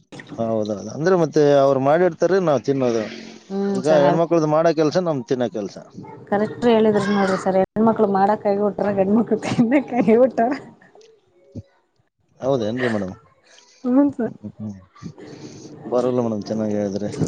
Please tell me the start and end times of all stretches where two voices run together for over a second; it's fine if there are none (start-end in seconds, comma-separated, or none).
none